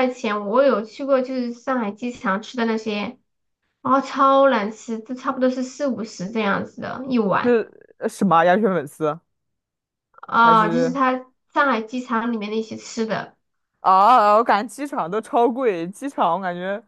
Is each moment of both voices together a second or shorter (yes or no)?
yes